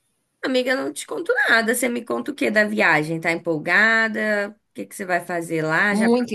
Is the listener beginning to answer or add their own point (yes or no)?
yes